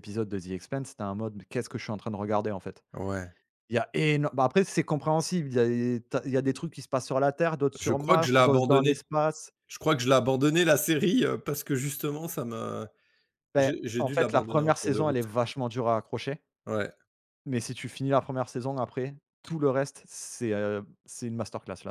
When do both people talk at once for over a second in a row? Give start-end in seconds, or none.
7.8-9.0, 13.6-15.2